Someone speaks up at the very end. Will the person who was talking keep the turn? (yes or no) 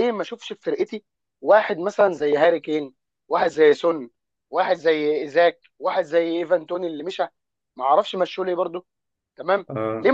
yes